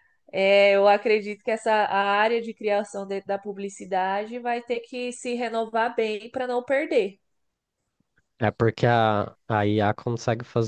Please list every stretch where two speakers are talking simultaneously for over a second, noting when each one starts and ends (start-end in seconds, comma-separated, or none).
none